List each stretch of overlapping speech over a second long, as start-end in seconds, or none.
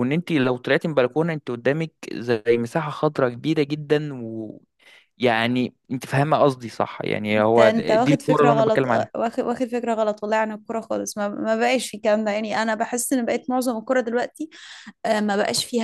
7.4-9.1